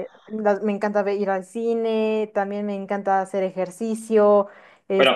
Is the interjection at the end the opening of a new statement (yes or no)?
yes